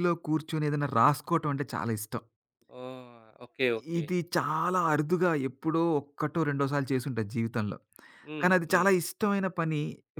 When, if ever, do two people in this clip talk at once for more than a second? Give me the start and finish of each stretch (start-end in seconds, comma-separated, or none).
none